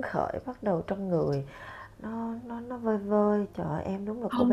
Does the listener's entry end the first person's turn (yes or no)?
yes